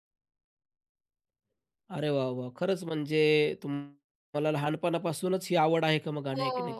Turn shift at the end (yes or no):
yes